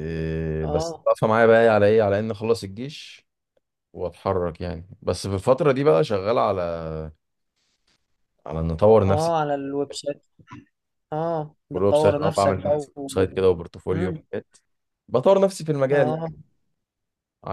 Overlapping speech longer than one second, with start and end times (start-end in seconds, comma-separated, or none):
11.7-13.1